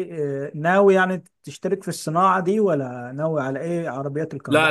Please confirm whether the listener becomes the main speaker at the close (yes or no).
yes